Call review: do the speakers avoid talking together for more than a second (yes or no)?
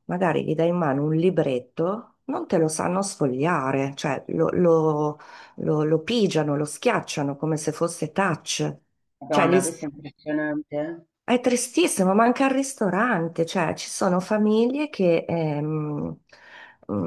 yes